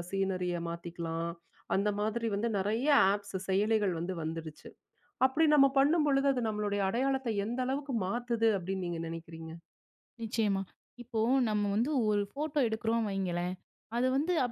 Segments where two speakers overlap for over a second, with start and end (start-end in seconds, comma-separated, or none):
none